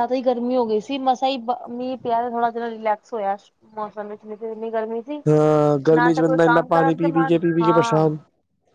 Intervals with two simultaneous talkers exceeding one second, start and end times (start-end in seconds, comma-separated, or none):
5.9-8.1